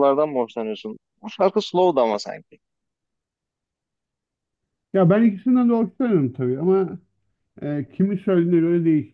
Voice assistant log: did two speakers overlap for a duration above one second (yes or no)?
no